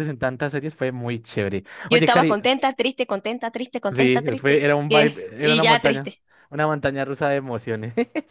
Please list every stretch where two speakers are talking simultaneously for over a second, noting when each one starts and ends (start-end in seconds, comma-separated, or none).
3.9-6.1